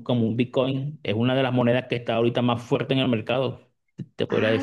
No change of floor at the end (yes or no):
no